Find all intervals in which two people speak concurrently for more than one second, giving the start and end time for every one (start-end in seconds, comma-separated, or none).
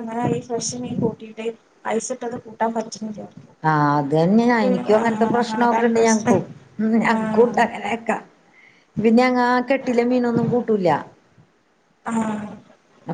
5.0-6.4